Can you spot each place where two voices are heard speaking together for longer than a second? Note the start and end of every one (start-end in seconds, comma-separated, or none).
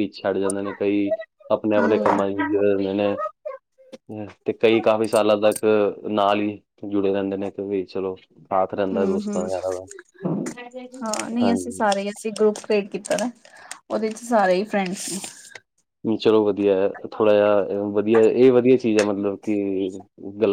none